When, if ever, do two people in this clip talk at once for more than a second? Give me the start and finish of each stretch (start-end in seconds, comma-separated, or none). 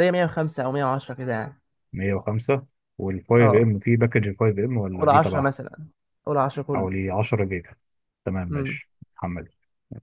none